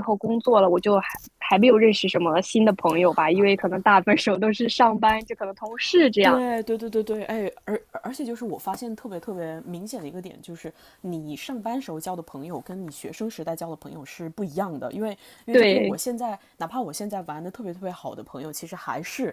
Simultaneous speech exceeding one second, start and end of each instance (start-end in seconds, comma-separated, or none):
none